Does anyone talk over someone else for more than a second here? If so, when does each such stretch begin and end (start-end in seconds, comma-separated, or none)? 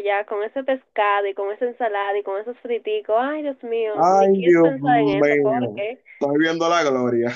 3.9-5.8